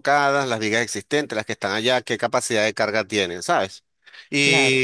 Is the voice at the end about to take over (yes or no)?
no